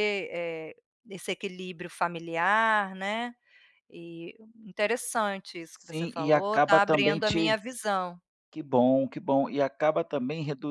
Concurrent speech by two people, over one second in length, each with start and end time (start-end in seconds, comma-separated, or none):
5.8-7.6